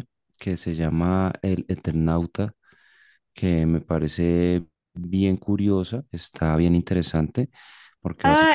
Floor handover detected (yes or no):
yes